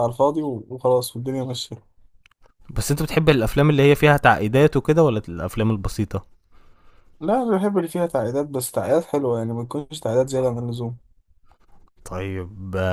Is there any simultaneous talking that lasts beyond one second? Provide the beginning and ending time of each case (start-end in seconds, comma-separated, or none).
none